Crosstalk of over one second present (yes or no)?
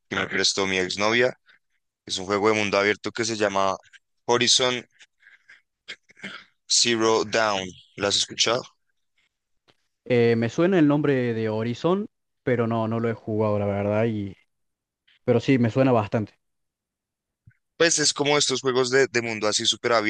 no